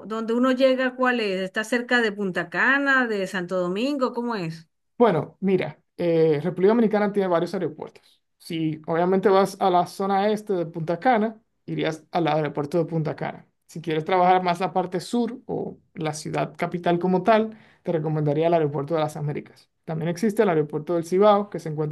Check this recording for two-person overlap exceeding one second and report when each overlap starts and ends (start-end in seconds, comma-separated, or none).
none